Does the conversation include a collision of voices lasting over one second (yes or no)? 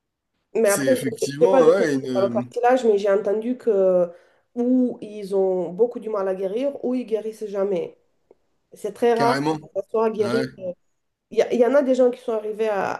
yes